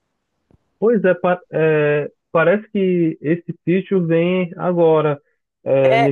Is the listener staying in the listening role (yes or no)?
yes